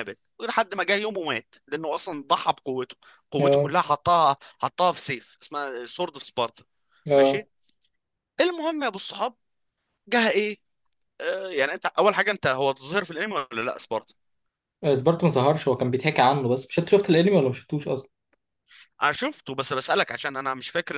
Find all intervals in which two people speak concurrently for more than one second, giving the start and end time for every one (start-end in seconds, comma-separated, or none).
none